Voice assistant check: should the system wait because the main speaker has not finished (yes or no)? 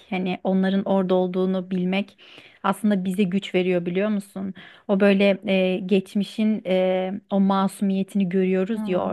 yes